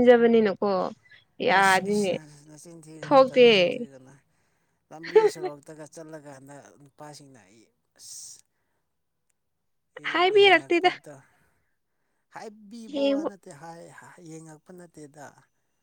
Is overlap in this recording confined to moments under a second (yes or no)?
yes